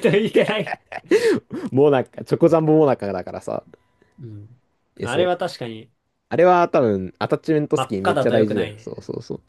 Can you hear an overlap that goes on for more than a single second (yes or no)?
yes